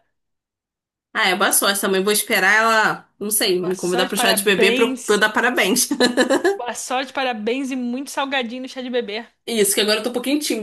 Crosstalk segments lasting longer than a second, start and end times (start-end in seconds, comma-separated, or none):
3.6-5.2